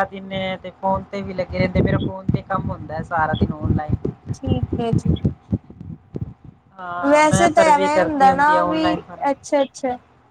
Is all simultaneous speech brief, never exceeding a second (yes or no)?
no